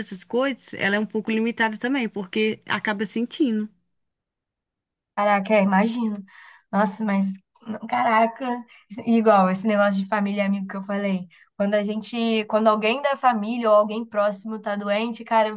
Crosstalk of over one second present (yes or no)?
no